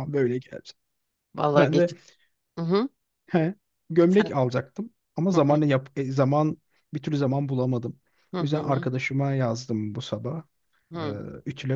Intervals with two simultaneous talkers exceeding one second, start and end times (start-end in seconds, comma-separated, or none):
none